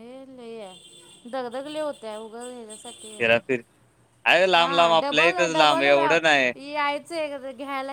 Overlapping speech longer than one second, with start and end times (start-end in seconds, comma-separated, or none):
4.6-6.5